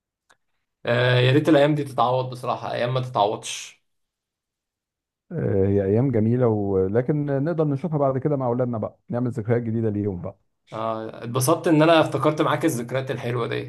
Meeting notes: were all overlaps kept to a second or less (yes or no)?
yes